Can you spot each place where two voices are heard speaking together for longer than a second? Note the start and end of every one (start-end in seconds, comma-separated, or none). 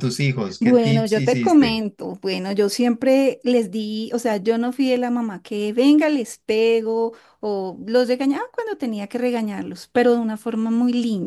0.6-1.8